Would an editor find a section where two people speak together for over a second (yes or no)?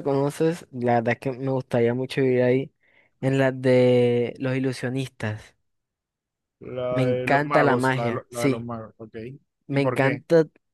yes